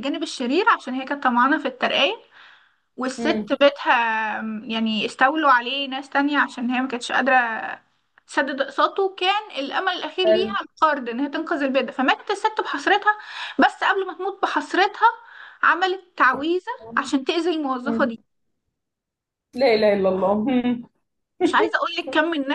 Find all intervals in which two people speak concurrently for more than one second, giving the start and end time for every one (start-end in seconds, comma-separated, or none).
none